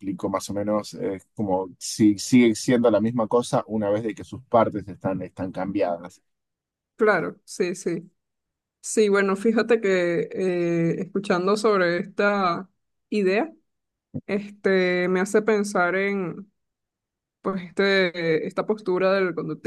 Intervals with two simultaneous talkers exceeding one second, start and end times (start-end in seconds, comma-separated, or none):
none